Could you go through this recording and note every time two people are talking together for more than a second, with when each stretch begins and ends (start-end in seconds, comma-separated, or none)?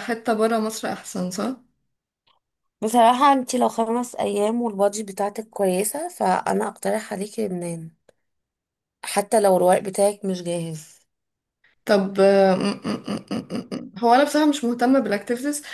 none